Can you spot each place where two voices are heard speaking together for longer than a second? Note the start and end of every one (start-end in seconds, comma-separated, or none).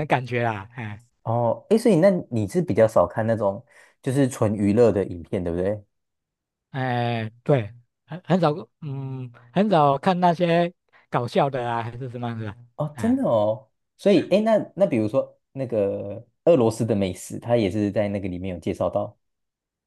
none